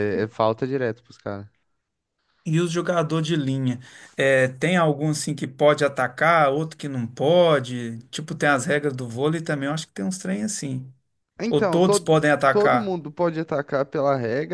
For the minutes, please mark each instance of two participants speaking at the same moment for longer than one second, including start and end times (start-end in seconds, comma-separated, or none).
11.5-12.9